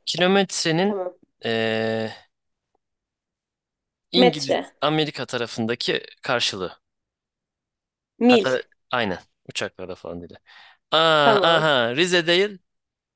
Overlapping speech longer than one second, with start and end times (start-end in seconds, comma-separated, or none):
none